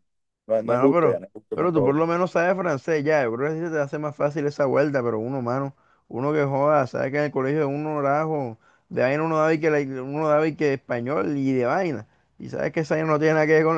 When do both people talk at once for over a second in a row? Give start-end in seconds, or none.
0.6-2.0